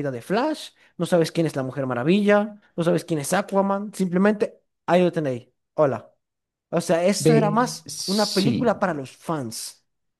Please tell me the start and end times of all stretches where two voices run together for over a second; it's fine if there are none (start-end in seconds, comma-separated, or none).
7.2-8.8